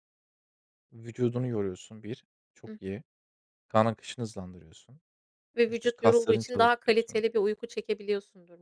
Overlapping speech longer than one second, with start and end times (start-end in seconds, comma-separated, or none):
5.7-7.2